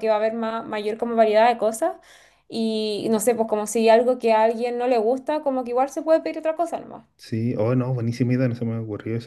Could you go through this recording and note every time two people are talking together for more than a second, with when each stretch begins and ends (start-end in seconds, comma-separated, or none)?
none